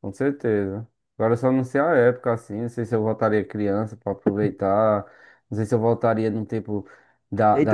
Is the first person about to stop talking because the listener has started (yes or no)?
yes